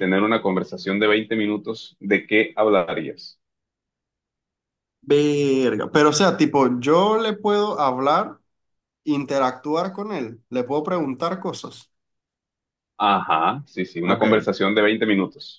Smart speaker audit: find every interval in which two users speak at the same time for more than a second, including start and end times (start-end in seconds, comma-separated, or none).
none